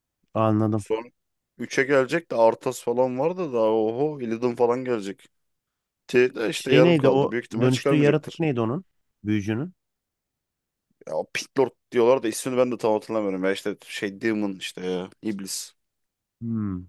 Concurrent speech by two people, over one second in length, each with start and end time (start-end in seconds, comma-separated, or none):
6.5-8.4